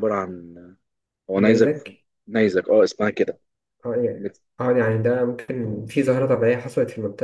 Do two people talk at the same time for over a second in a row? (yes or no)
no